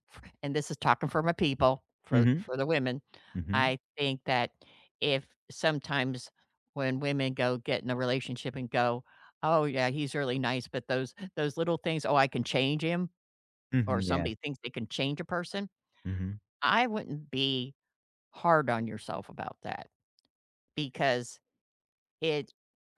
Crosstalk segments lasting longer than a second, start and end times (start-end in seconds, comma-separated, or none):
none